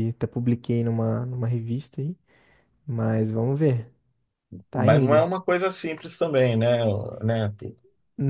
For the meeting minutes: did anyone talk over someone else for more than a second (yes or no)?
no